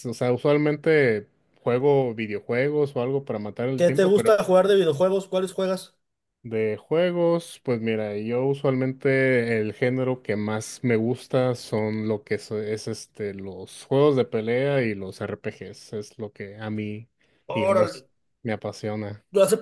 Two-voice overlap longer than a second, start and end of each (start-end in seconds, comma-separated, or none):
none